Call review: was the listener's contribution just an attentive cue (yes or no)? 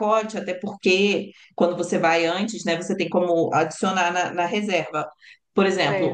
yes